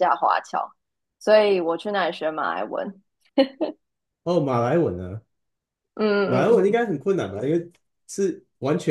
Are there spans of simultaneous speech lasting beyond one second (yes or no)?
no